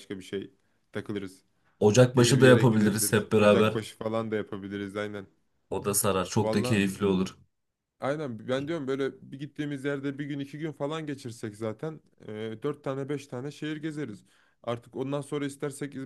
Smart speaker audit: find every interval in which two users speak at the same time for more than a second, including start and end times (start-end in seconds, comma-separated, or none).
2.1-3.7